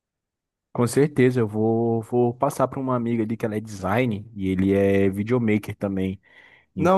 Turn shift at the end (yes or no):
yes